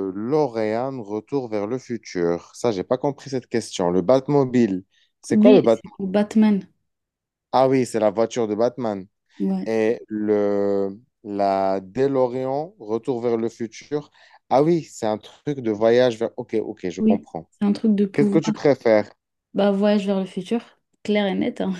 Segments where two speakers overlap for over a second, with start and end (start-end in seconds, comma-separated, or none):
none